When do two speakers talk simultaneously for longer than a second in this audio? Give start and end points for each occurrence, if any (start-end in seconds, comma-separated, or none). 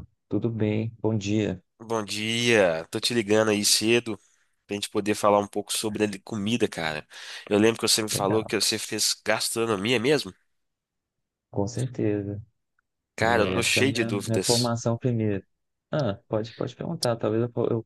13.2-14.8